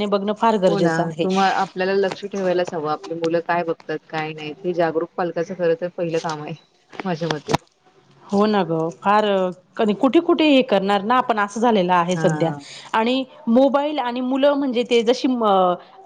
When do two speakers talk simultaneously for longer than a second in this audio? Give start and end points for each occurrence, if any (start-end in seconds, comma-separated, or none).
none